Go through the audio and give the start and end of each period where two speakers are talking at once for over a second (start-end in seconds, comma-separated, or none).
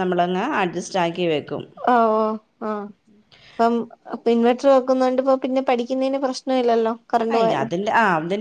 none